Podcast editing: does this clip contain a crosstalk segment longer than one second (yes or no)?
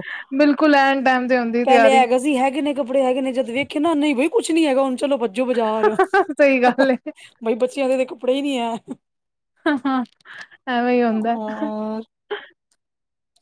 no